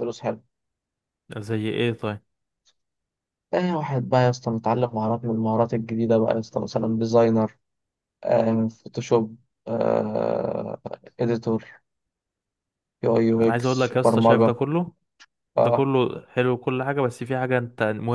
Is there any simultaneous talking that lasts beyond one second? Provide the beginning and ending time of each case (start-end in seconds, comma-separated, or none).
13.4-14.6